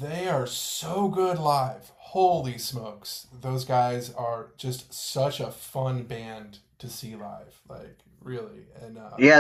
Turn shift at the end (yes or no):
yes